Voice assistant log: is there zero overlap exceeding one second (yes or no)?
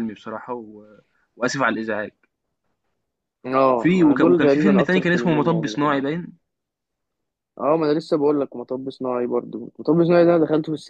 no